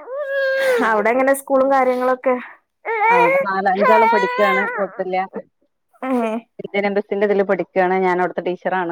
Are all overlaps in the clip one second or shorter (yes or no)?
yes